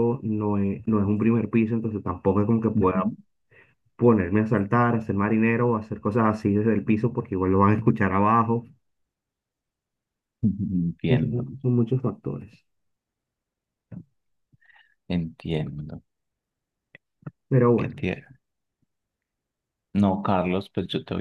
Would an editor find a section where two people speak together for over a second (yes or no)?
no